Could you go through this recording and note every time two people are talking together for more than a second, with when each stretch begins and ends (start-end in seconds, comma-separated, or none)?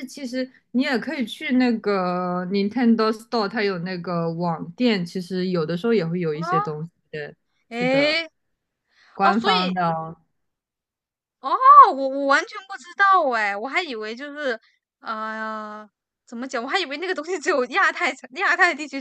none